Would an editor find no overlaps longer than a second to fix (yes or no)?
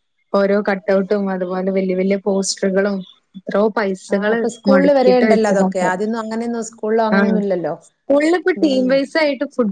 no